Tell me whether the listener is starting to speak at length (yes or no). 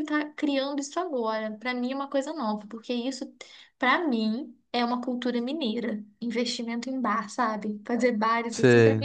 no